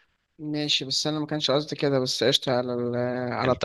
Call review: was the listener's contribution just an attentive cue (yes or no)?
yes